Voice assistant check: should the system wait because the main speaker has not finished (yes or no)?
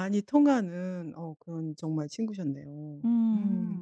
no